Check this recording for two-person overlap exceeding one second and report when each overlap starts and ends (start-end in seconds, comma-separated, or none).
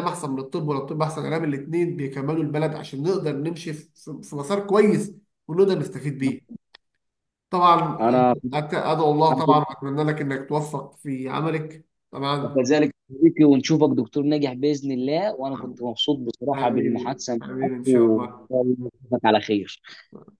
16.5-18.5